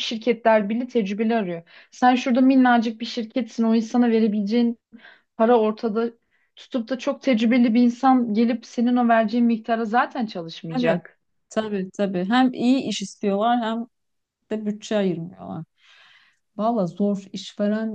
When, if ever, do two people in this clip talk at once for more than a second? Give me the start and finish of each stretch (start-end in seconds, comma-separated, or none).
none